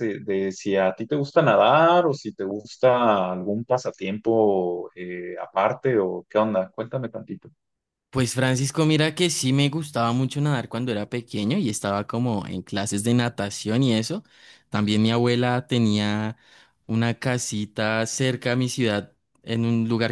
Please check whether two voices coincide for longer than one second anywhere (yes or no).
no